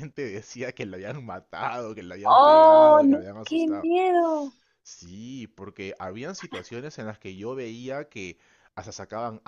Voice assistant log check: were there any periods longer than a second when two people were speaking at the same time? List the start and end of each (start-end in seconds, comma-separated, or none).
2.2-3.9